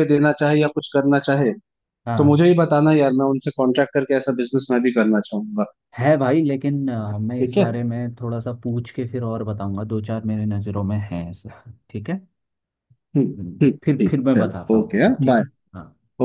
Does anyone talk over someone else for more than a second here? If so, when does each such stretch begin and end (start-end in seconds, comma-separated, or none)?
13.6-15.4